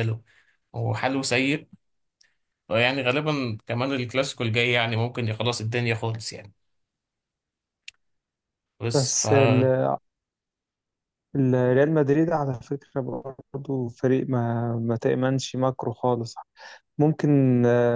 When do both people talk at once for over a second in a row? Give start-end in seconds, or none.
none